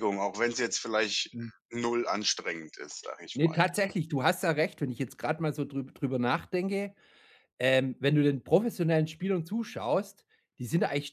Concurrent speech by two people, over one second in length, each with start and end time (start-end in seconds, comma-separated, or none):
none